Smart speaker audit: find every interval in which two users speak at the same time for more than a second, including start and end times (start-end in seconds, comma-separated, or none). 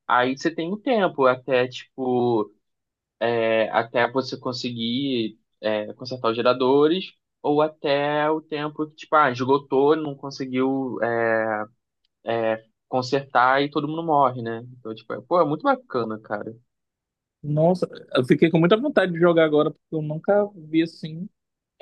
none